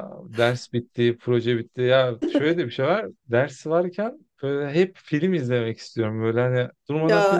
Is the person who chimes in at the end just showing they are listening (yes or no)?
yes